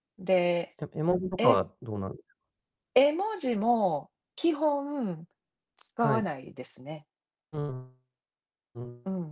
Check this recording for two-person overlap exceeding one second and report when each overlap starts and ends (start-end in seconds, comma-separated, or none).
none